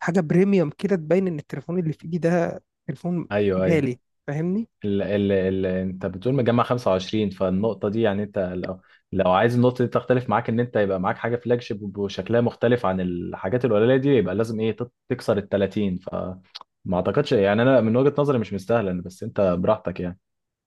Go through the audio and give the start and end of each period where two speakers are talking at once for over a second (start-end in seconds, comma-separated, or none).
none